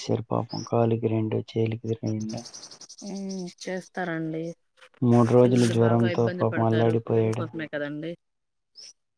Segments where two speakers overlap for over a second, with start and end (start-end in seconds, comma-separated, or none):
5.4-7.4